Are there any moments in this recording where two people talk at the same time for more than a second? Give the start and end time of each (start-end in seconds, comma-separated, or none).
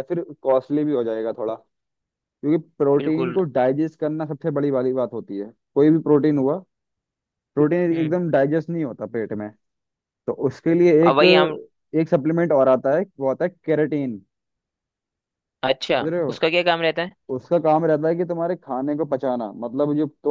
none